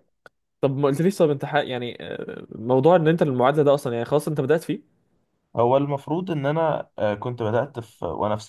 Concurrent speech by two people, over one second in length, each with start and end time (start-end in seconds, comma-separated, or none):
none